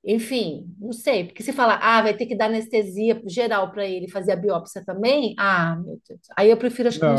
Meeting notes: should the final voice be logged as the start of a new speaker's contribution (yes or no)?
yes